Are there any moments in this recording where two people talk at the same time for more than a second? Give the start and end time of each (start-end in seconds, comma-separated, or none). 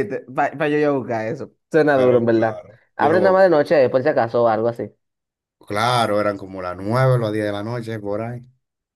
1.9-3.6